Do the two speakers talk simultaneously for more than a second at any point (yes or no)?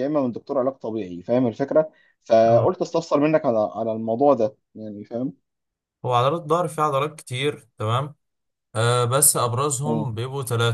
no